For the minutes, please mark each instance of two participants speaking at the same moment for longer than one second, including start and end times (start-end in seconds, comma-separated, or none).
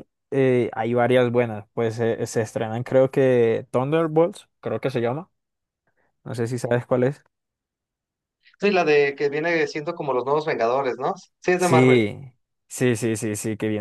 none